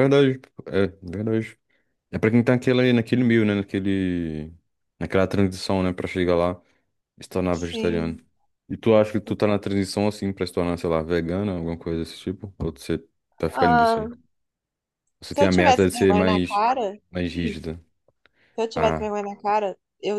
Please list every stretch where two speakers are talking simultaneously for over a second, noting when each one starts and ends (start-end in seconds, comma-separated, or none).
15.3-16.6